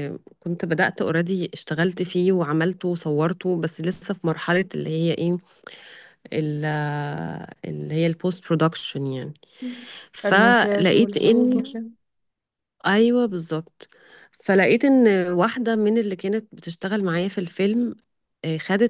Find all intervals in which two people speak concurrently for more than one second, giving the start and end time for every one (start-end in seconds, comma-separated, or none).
10.2-11.6